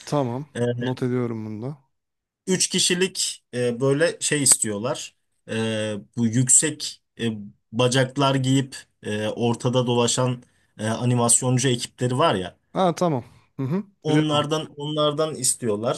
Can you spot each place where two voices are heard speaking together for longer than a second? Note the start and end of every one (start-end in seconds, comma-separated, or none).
none